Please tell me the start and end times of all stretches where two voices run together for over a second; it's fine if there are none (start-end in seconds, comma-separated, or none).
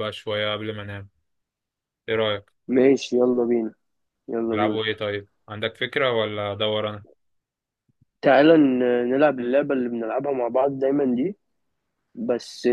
none